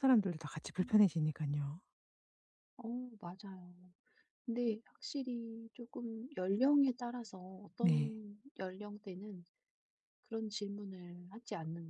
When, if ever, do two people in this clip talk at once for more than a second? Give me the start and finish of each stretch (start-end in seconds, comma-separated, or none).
none